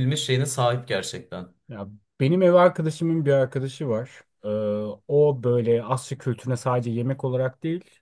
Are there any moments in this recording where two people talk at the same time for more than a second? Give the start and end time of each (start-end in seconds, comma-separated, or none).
none